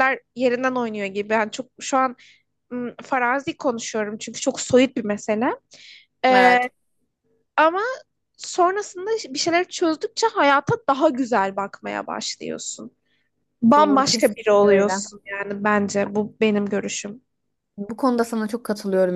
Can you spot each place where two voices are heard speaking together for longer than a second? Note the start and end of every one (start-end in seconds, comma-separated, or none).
13.7-15.0